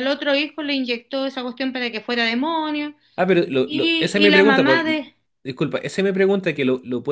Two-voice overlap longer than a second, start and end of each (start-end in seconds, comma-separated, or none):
3.6-5.0